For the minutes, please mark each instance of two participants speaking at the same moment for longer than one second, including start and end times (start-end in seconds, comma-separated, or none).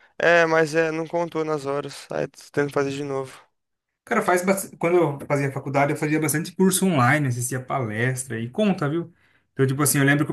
none